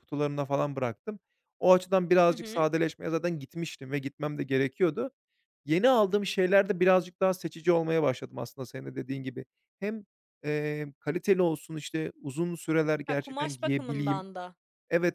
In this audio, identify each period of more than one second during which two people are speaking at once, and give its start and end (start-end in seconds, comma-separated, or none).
13.1-14.2